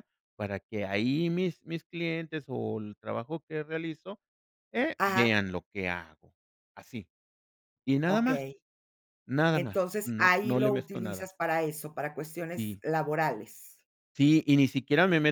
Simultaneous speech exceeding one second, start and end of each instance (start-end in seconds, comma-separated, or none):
9.5-11.3